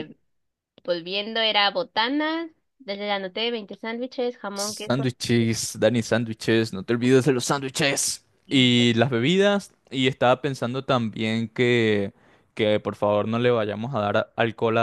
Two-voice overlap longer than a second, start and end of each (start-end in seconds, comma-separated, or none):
none